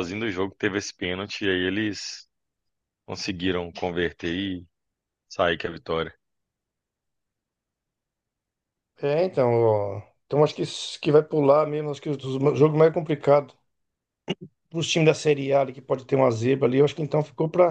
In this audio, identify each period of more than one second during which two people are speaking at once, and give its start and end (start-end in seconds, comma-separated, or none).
none